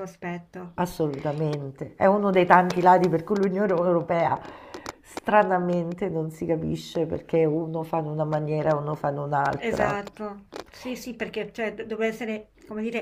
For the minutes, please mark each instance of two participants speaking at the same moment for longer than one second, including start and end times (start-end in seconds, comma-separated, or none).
none